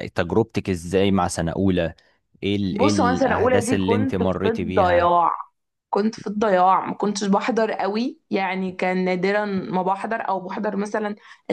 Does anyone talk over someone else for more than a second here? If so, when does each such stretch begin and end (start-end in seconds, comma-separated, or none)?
2.7-5.1